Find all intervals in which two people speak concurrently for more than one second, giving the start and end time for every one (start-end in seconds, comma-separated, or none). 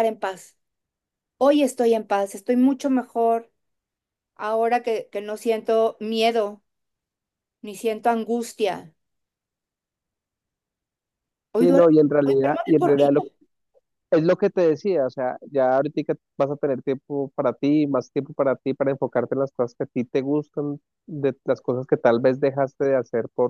11.5-13.2